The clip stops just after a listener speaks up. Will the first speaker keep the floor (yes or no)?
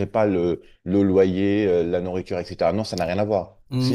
no